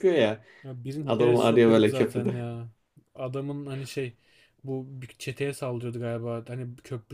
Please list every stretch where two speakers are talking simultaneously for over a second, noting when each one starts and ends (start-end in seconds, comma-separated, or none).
1.1-2.4